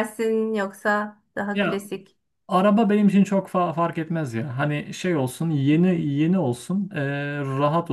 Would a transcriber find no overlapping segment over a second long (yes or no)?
yes